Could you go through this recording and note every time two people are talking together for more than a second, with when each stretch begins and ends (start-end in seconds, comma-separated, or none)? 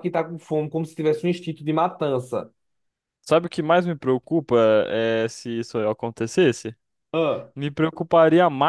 none